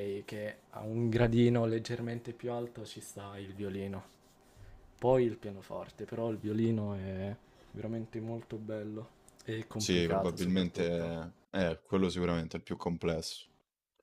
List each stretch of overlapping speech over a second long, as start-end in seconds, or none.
9.8-11.2